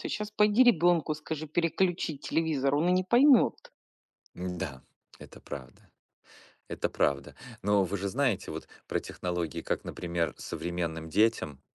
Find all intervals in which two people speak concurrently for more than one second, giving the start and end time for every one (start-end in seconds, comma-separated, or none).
none